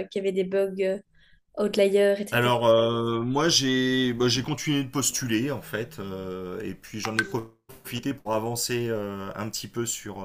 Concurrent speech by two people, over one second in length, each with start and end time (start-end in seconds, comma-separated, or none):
none